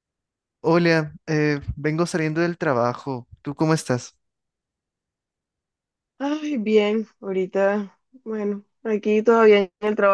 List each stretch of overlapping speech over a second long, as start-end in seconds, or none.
none